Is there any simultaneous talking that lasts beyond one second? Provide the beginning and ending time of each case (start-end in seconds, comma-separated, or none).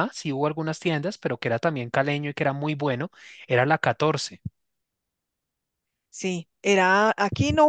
none